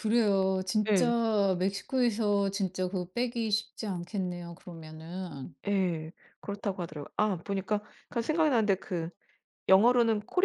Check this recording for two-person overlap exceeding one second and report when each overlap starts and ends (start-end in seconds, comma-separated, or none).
none